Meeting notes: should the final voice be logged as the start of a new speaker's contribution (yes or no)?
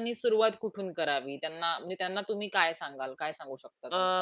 yes